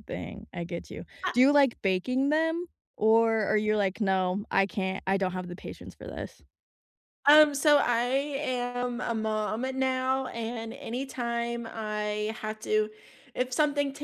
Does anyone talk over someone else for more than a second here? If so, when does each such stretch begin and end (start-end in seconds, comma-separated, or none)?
none